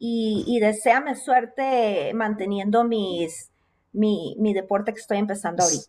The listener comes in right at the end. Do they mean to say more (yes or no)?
yes